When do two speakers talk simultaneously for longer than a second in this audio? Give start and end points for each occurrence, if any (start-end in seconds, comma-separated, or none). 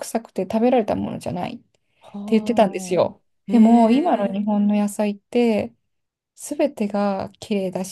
3.0-4.5